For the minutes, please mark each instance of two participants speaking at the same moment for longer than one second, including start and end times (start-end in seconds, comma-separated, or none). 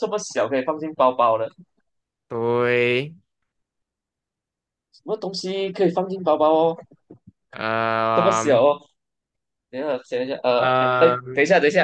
none